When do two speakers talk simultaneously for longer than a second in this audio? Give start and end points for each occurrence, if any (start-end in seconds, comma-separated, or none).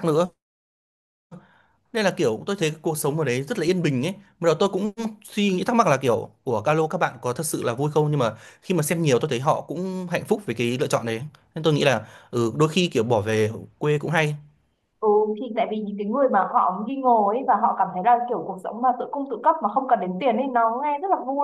none